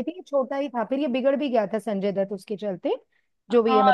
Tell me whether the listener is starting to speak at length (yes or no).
yes